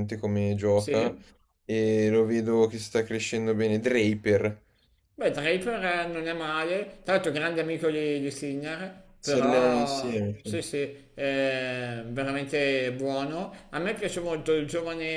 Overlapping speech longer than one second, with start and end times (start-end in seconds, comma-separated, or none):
9.2-10.6